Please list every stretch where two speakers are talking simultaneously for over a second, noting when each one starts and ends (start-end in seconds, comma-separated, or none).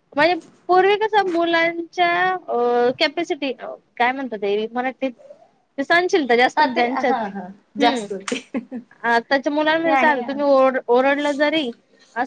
none